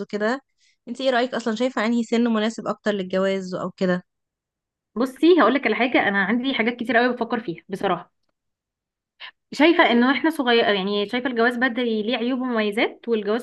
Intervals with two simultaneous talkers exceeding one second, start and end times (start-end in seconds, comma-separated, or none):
none